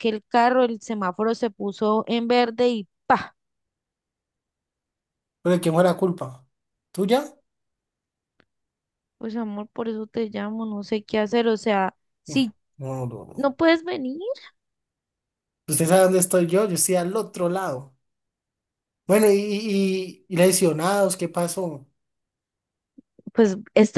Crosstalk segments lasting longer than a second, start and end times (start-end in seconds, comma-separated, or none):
none